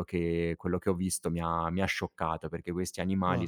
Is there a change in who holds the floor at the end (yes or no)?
no